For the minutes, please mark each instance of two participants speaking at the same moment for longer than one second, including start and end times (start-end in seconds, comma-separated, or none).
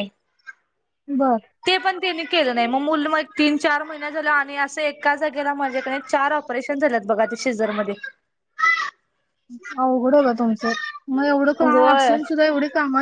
none